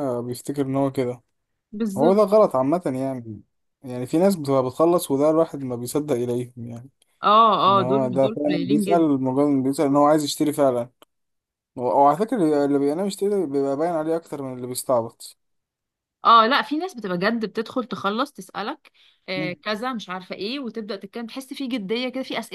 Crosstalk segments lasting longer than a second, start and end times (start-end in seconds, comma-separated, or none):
7.7-9.1